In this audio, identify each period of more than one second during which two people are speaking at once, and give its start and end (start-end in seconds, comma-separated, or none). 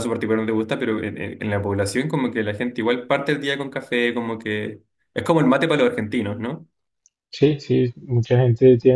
none